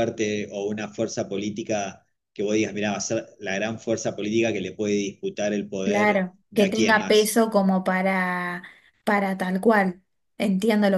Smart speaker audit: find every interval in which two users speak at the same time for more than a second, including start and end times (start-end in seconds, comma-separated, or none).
5.8-7.4